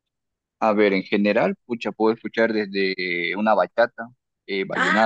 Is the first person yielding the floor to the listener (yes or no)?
yes